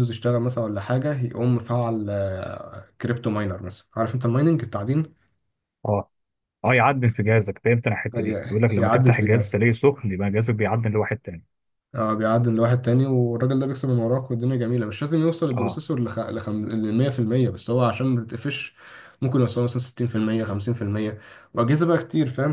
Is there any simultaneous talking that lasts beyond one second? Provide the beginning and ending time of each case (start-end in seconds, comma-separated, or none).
8.2-9.6